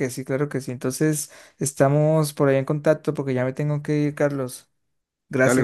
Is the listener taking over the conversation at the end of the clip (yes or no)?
no